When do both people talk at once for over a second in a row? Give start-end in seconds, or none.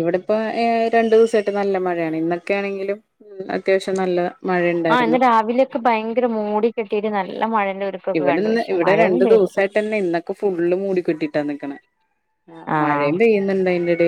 none